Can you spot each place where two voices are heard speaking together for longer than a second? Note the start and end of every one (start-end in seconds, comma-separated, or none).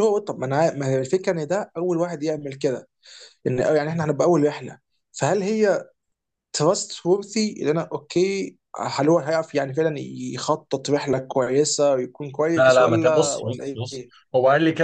12.6-14.0